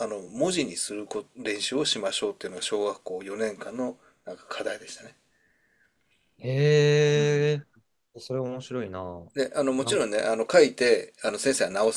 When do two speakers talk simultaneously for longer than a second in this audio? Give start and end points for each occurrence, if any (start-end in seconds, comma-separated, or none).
none